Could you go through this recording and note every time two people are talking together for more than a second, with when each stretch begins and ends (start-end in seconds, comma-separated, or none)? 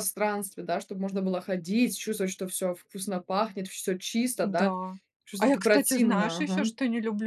5.4-6.7